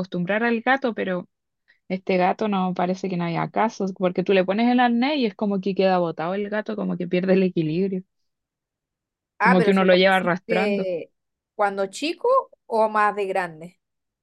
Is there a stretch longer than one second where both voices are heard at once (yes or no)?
yes